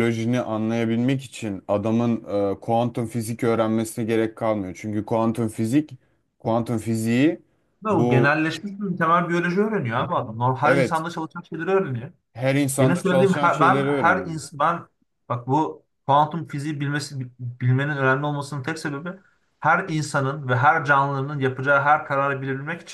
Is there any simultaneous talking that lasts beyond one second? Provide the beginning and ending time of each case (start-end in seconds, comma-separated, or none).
12.8-14.4